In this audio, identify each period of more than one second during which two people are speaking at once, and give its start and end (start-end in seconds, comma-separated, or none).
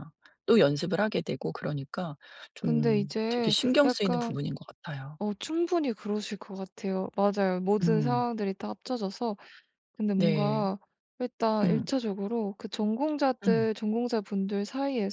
2.6-4.4